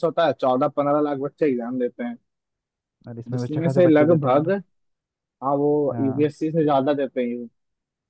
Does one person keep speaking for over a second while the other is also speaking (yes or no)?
yes